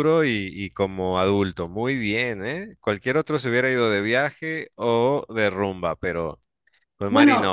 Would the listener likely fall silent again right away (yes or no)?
no